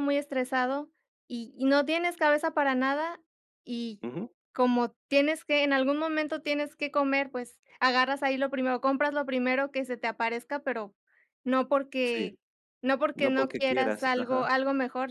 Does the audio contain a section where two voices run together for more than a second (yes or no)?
yes